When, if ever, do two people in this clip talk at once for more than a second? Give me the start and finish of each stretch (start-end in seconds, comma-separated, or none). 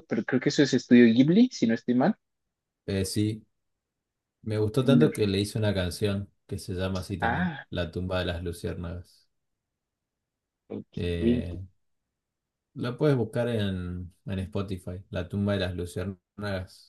none